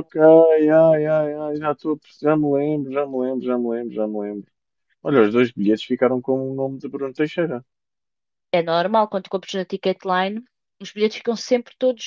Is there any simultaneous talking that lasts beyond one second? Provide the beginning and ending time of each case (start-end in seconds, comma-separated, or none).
none